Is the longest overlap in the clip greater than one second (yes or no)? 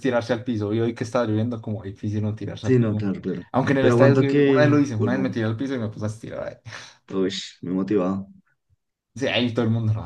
yes